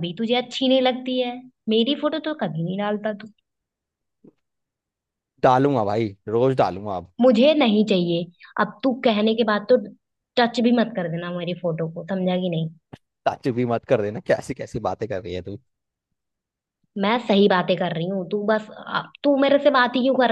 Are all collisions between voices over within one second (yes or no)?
yes